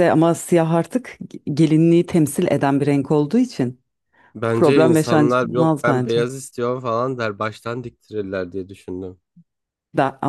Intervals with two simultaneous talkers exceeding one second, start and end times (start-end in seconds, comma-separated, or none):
4.5-6.3